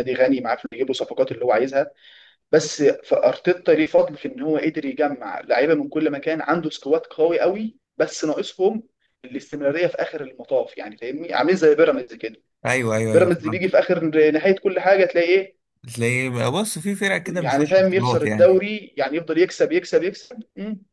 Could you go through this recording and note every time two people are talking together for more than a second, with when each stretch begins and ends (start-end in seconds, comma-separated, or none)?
17.3-18.6